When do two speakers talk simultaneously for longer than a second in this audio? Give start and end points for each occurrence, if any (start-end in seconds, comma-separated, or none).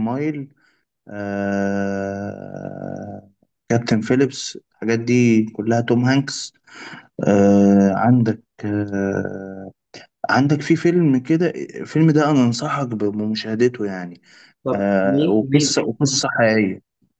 14.7-16.3